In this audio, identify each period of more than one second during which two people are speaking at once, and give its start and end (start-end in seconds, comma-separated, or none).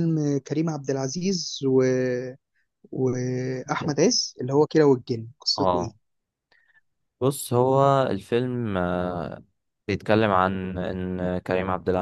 none